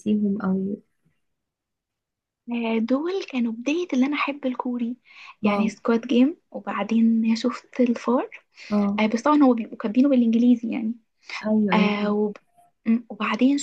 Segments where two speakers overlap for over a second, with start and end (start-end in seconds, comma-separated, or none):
none